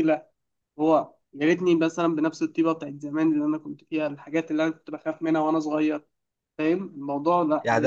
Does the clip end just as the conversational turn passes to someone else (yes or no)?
yes